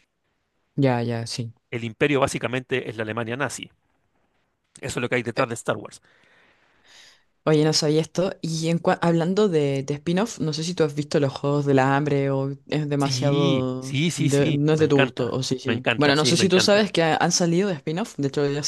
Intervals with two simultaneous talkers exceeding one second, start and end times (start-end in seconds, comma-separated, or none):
13.0-16.9